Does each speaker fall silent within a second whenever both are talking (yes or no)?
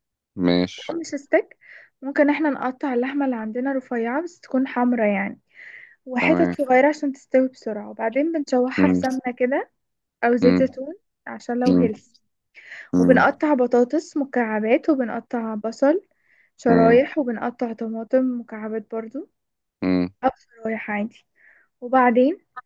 yes